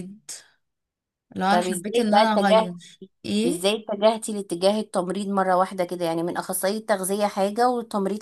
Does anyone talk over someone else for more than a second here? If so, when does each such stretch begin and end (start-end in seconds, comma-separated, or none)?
1.5-2.7